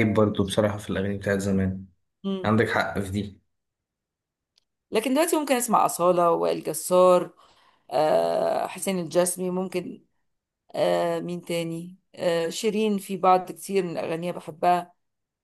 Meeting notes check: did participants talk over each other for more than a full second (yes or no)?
no